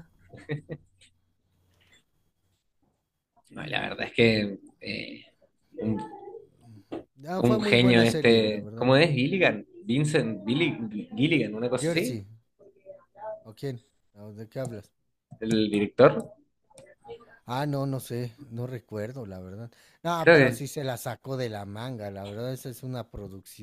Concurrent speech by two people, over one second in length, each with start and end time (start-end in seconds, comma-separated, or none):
7.4-8.9